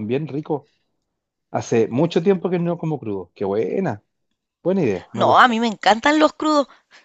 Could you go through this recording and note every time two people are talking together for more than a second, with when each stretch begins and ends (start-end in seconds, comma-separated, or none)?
none